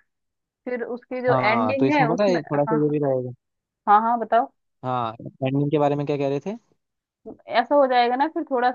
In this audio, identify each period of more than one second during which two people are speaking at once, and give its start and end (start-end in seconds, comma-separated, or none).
1.3-2.8